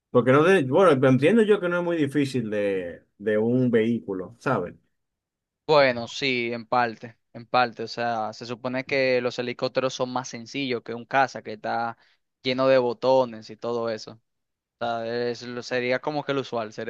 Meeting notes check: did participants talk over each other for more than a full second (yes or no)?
no